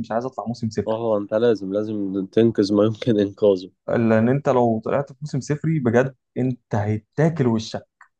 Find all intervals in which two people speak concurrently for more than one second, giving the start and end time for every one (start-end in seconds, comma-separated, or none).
none